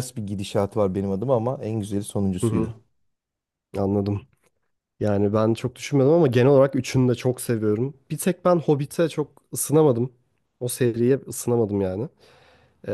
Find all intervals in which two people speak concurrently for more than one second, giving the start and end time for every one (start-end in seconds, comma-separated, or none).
none